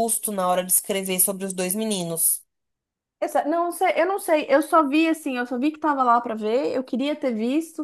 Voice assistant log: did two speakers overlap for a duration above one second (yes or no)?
no